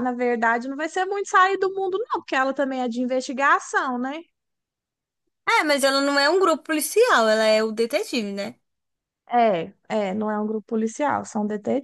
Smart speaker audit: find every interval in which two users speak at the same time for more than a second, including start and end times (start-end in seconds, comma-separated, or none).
none